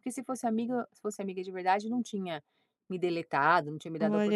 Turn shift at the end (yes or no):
yes